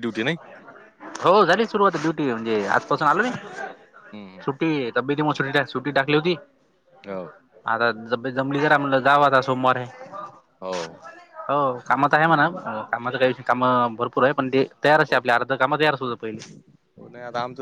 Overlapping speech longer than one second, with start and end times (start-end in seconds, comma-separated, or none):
none